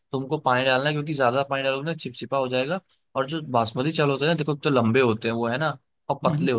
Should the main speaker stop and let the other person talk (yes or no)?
no